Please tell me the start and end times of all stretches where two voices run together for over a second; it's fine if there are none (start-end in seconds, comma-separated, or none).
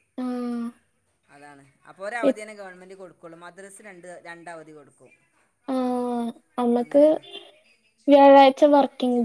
none